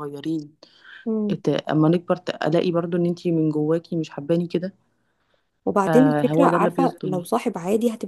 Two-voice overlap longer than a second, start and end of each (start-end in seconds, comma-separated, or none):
5.9-7.2